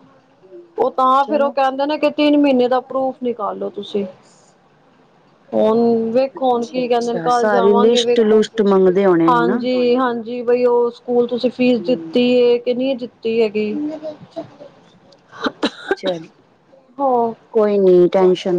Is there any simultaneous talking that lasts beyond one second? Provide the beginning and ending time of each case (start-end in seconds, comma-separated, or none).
6.3-8.4